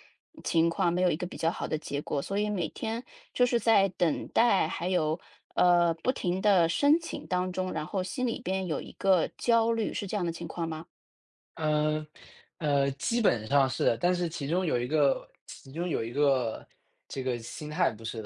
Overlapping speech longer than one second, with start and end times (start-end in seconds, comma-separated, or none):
none